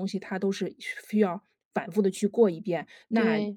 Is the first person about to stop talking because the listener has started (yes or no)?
no